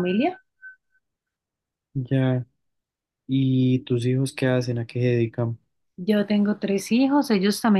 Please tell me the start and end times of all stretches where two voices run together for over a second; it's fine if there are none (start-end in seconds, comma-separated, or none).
none